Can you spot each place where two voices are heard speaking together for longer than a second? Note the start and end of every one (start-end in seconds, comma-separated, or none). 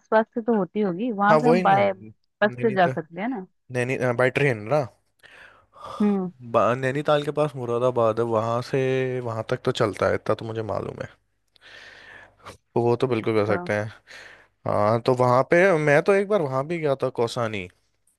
1.3-2.9